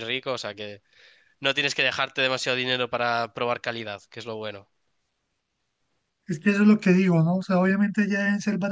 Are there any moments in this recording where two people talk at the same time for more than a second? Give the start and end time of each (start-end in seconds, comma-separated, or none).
none